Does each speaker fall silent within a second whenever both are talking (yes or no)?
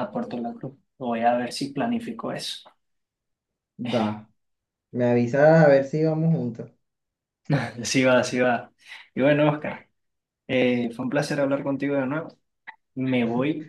yes